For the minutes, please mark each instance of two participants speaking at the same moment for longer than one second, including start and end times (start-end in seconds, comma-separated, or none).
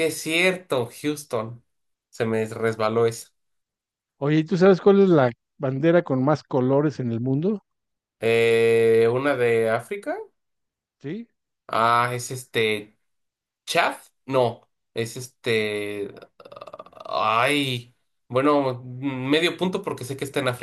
none